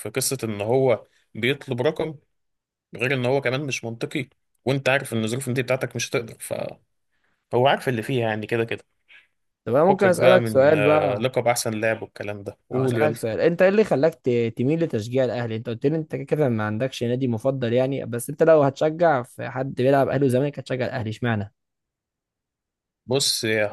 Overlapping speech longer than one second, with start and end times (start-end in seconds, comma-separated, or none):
9.9-11.2